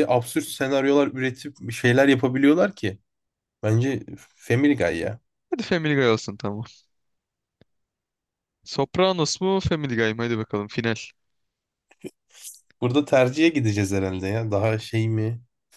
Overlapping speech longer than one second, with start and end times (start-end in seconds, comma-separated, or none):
none